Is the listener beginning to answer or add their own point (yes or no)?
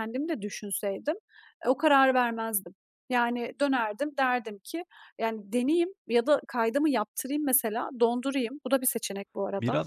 yes